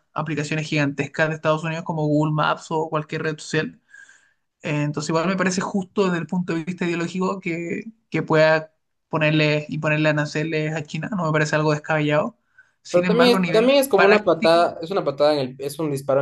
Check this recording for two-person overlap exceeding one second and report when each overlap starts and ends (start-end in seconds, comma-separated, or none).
12.9-14.7